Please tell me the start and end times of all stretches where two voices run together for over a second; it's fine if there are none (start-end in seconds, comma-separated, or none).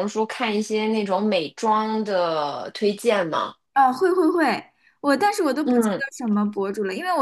none